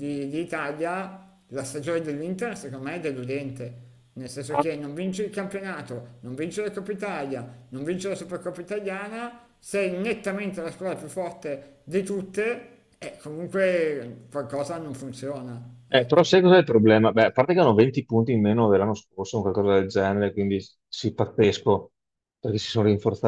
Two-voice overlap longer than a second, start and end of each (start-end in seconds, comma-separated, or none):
none